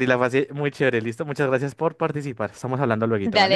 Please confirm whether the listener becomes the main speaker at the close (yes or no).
yes